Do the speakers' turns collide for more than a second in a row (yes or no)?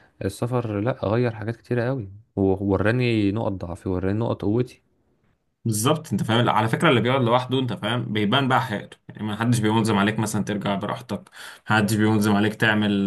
no